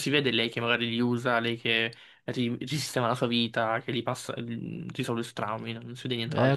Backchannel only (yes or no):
no